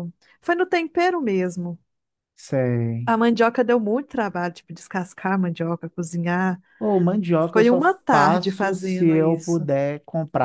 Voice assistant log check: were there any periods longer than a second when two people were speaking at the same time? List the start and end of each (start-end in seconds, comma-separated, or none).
7.5-9.7